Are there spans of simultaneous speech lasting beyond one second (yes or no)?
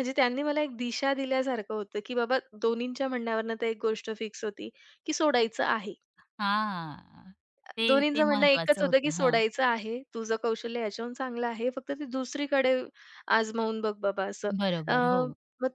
yes